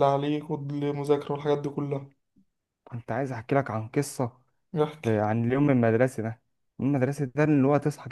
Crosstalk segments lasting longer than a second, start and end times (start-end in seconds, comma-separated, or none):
none